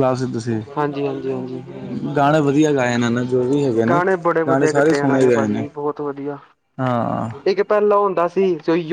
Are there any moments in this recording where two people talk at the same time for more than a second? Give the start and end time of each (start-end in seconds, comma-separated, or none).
3.9-5.7